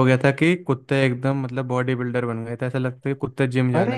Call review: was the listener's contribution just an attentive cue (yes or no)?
no